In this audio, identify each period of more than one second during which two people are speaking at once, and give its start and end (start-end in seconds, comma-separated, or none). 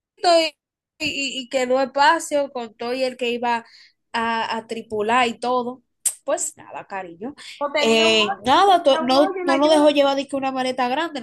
7.8-9.9